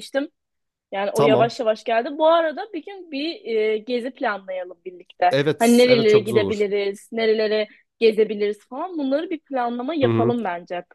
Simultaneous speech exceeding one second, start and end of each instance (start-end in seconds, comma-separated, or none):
5.3-6.7